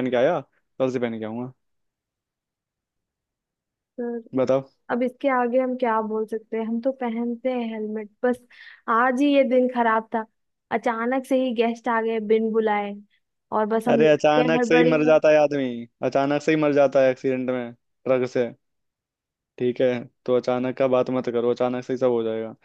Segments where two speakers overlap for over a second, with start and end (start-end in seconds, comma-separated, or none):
13.9-15.1